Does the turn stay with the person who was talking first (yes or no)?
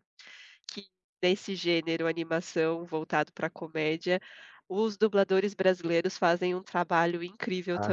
yes